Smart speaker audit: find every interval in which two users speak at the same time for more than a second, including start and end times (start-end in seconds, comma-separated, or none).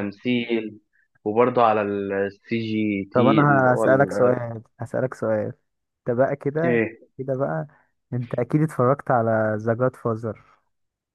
3.1-4.5